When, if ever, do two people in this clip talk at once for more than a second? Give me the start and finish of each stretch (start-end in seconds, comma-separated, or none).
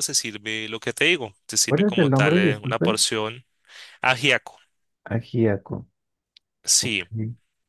1.7-3.0